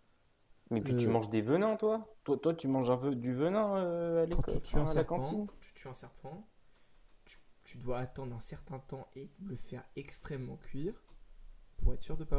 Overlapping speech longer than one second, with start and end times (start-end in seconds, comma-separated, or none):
4.3-5.5